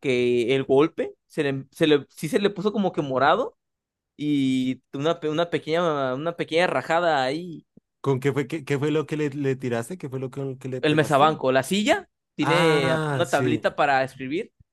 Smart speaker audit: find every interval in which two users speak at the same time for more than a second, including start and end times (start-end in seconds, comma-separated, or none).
12.4-13.7